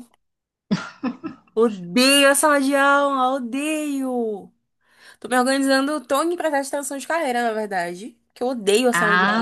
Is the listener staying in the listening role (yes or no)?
no